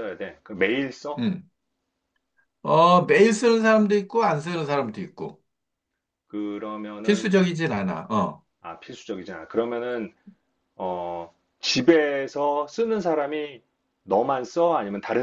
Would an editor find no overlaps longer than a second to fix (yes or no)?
yes